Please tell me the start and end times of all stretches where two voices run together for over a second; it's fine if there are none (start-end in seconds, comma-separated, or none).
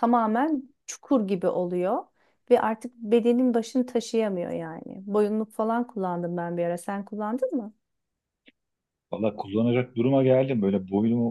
none